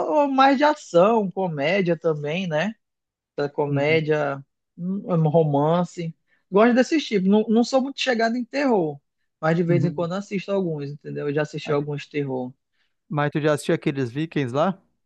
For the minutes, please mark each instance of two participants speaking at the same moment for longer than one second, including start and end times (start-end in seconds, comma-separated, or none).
none